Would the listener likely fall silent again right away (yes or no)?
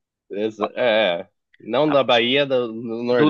no